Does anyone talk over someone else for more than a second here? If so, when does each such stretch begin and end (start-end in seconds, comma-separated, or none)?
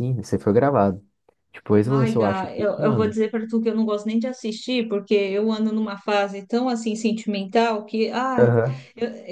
1.9-3.2